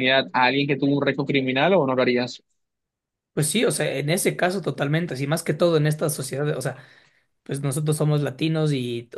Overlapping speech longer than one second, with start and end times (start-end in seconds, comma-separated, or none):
none